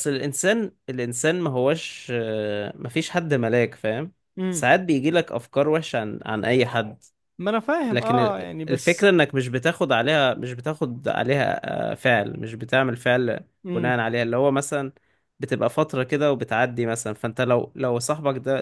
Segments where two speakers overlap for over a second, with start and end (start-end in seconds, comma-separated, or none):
7.9-9.1